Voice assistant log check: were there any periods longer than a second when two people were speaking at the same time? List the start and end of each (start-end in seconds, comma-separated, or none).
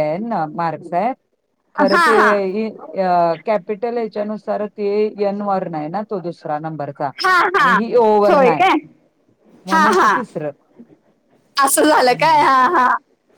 none